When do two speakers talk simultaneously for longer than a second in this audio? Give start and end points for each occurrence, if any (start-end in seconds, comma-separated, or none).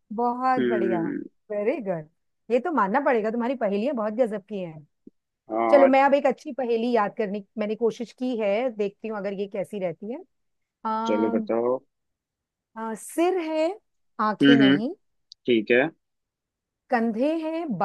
none